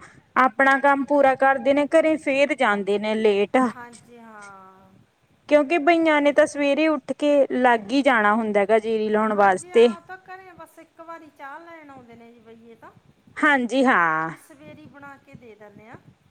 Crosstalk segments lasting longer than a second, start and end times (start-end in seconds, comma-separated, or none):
none